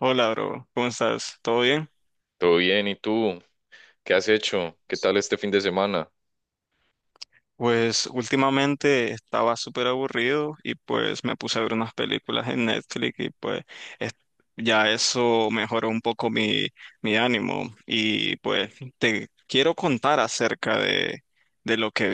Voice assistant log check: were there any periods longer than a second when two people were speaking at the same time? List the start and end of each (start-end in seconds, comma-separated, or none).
none